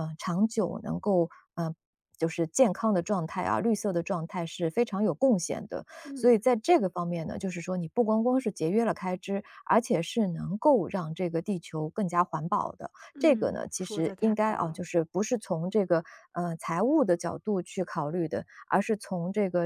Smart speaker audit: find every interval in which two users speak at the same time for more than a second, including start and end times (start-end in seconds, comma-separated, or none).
13.1-14.8